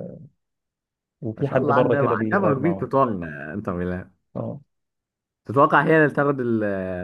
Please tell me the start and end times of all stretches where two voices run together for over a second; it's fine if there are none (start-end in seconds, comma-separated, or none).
1.4-2.9